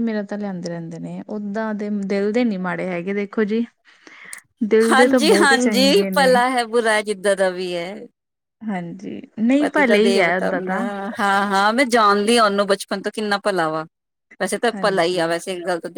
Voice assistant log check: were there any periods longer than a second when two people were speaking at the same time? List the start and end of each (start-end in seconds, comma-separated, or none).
4.9-6.3